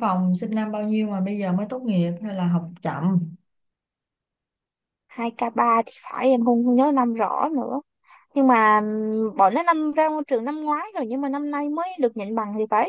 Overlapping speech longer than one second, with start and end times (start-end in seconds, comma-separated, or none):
none